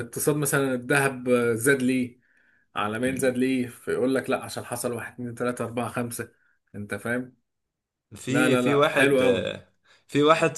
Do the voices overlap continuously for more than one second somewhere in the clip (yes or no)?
yes